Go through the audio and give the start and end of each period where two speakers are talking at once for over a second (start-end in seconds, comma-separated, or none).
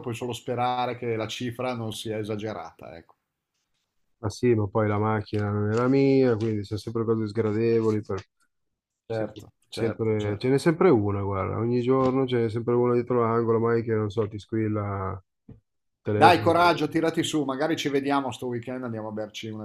9.1-10.5